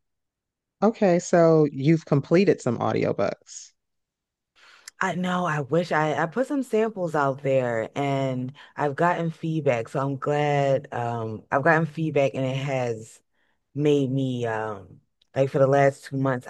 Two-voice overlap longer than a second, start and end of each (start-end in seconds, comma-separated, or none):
none